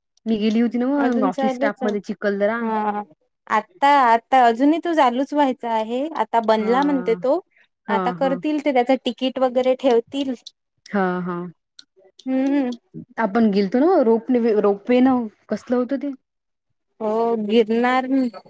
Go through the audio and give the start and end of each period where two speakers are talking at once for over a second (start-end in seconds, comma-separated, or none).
1.0-2.6